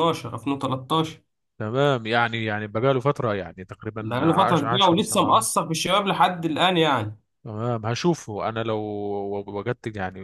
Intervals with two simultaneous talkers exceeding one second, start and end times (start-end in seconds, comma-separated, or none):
4.0-5.5